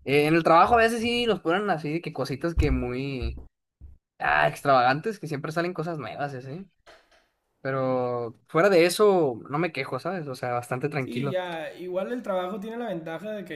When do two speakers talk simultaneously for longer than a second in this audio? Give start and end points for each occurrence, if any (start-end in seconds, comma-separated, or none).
none